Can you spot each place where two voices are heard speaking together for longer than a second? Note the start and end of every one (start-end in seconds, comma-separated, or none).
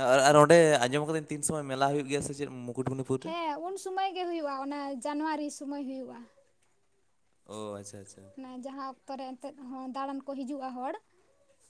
none